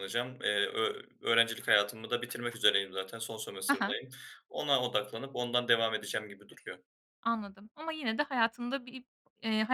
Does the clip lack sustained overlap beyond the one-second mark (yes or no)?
yes